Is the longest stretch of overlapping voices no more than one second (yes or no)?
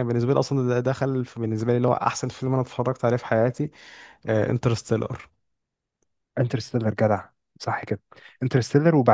yes